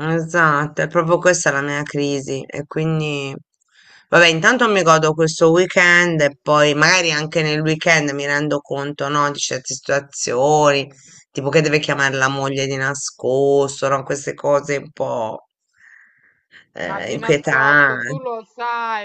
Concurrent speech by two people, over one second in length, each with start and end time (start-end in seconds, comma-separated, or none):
16.8-18.2